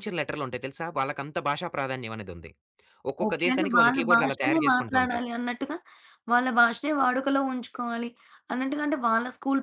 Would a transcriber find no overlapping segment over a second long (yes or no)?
no